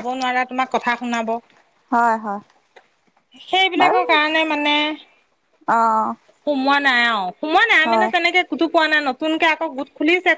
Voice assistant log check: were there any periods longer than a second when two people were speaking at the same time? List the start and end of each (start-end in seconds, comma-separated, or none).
none